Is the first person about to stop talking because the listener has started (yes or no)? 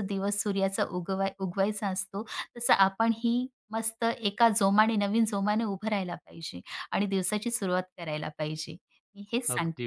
yes